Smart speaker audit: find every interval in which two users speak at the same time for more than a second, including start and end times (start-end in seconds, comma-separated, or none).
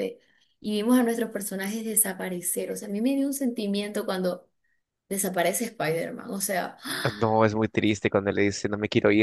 none